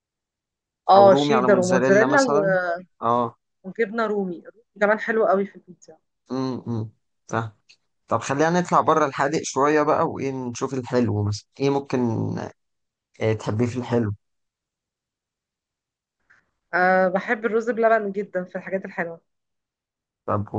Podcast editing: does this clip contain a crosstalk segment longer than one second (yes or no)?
yes